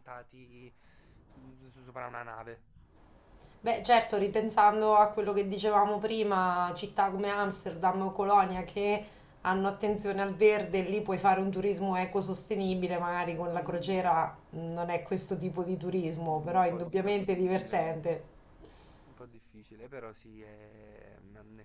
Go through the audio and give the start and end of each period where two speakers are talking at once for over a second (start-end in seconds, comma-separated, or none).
16.3-17.9